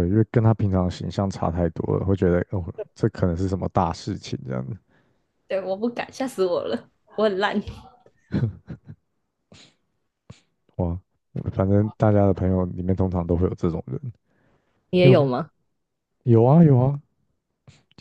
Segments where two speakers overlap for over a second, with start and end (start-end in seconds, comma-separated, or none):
none